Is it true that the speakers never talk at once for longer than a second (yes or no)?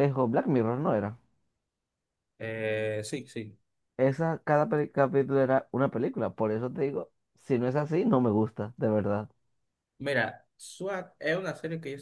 yes